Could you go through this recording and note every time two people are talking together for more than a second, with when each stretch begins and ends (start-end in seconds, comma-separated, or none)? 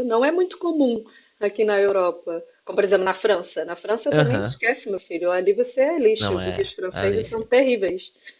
6.2-7.5